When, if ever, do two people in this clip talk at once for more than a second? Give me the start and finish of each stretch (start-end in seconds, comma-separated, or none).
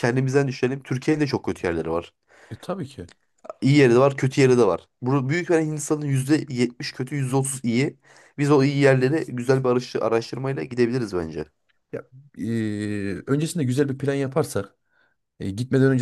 none